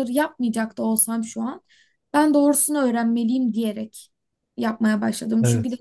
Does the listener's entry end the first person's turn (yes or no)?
no